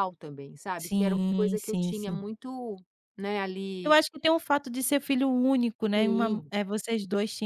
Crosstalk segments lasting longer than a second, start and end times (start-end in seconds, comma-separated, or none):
0.8-2.2